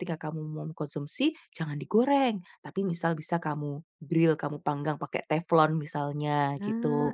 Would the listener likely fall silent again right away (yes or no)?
yes